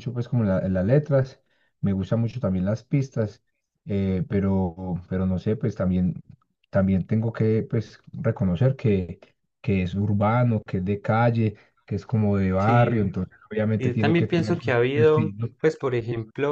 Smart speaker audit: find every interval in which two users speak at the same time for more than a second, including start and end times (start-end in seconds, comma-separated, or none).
13.8-15.5